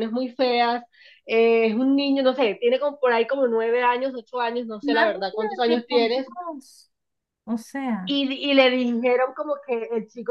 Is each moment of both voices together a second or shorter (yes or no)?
no